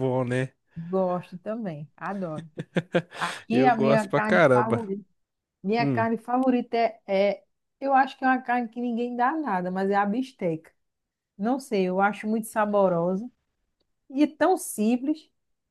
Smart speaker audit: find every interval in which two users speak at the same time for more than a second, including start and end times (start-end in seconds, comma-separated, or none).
3.5-4.9